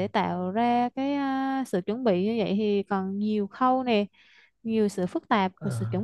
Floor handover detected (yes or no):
no